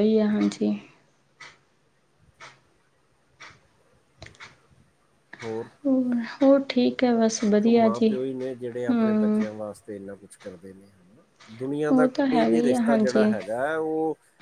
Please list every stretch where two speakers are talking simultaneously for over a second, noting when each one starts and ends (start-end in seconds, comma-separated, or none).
11.9-13.2